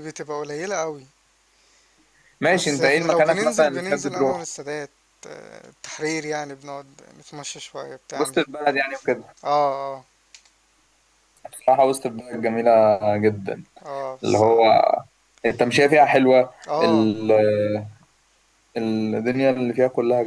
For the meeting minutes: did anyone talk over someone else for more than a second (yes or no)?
yes